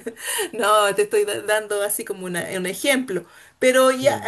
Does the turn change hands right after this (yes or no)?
no